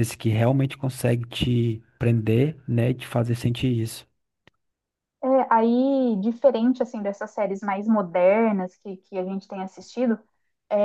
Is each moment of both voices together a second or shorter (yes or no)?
yes